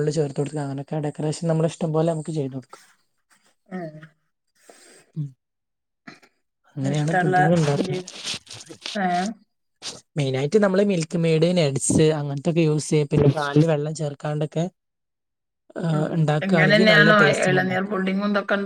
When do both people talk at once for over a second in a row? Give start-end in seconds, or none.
15.9-17.9